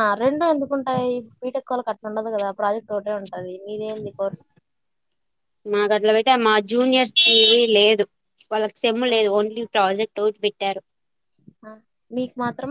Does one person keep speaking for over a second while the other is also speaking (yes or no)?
no